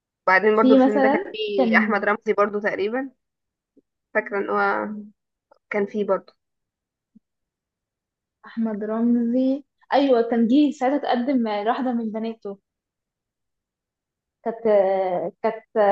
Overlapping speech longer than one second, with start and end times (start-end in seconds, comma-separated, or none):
0.5-2.0